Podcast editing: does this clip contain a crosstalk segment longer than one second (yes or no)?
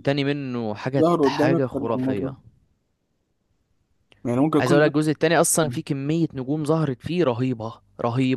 yes